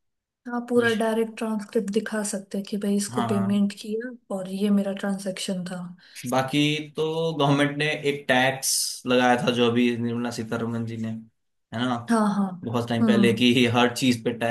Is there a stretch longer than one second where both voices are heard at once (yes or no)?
no